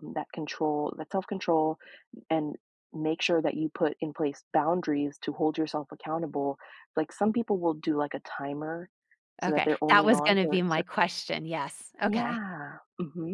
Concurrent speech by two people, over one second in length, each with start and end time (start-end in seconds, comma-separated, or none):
9.4-10.9